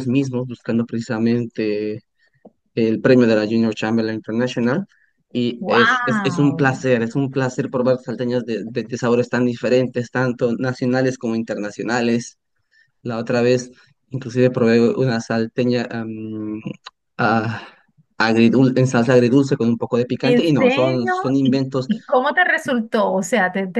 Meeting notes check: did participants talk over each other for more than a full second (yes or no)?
yes